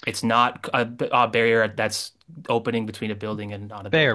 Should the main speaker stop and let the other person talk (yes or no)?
yes